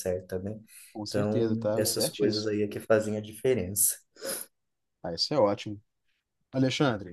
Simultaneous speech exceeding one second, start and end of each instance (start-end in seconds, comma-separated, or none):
1.1-2.5